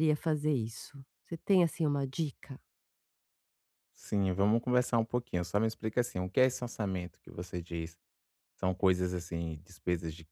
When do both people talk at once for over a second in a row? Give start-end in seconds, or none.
none